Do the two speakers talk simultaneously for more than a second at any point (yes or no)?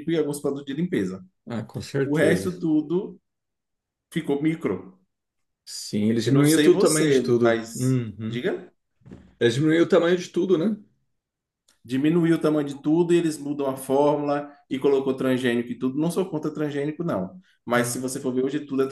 yes